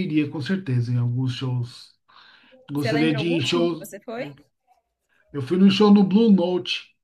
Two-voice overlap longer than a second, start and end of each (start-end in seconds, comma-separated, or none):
2.7-4.3